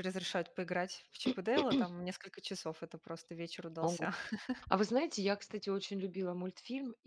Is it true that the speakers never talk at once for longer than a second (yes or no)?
yes